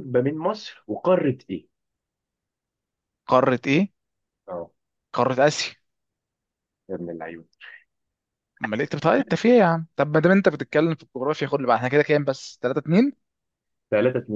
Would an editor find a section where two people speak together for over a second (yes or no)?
no